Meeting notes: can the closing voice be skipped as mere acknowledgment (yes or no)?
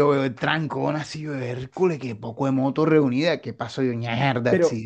no